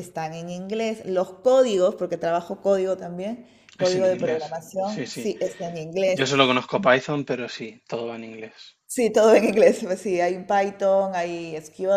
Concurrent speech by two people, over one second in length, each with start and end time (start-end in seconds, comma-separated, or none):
3.8-5.3